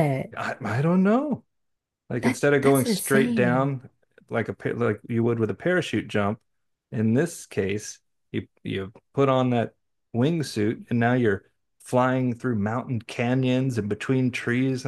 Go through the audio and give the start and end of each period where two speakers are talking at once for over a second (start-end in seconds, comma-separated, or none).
2.2-3.7